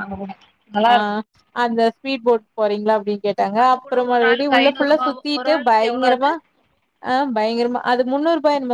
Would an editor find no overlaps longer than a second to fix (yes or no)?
no